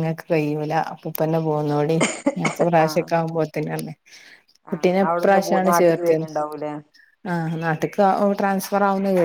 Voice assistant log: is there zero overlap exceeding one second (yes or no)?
no